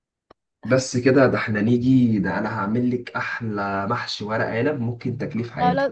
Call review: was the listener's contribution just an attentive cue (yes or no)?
no